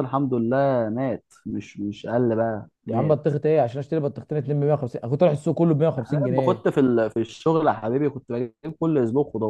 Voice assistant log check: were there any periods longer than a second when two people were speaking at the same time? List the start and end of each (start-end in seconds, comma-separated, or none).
none